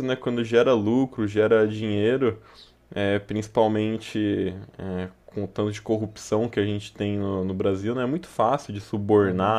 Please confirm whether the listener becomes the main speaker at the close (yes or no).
no